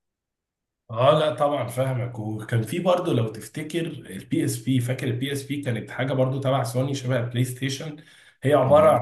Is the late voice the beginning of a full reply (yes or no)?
no